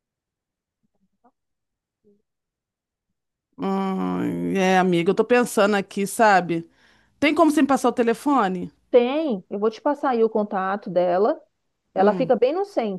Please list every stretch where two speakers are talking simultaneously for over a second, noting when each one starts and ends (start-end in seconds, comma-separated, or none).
none